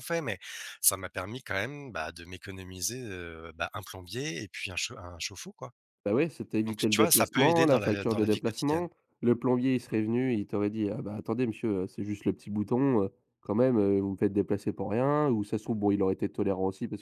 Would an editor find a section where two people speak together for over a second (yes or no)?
yes